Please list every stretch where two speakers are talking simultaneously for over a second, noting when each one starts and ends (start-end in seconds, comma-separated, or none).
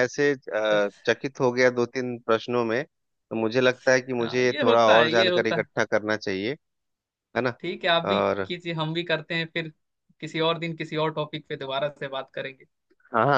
4.2-5.4